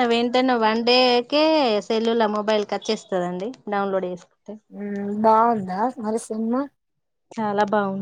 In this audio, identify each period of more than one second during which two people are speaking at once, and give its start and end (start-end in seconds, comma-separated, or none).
none